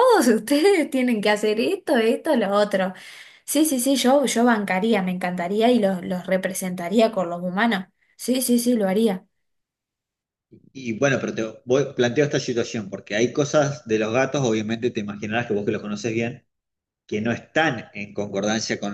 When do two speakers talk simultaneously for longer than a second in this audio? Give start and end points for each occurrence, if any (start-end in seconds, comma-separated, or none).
none